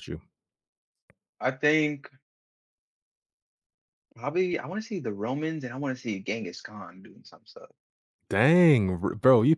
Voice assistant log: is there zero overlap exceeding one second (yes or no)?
yes